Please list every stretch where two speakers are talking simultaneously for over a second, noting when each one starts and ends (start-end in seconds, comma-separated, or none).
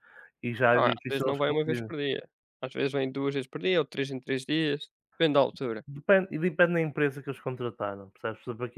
0.7-1.9